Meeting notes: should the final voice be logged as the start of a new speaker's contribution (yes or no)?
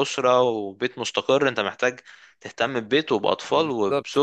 no